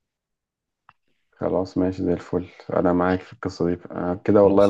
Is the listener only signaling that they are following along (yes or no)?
yes